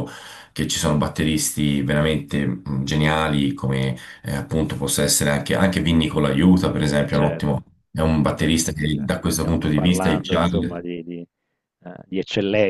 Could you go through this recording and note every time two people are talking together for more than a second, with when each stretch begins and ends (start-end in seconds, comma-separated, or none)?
8.2-10.8